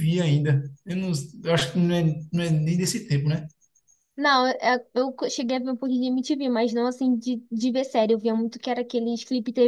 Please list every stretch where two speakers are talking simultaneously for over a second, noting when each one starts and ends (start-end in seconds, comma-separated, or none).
none